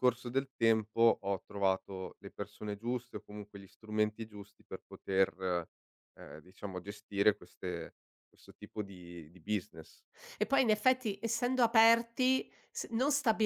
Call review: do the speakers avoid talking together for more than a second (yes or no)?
yes